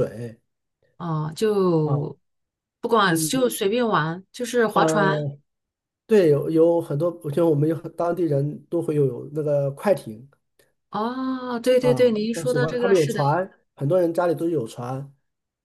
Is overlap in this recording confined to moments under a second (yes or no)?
no